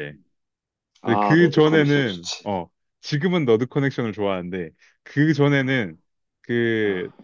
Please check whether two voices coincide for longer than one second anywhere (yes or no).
yes